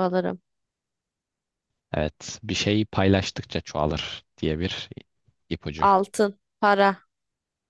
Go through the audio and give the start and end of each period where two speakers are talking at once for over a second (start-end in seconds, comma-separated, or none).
none